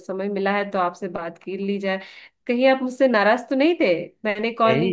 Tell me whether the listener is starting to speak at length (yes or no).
yes